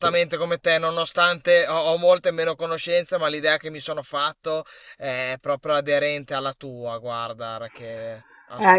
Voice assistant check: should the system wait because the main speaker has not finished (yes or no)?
no